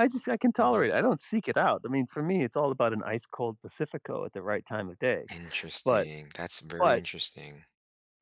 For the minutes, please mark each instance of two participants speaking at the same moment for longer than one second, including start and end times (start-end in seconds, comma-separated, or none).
none